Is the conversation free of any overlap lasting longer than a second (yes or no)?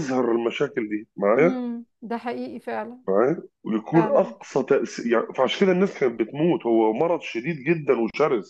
yes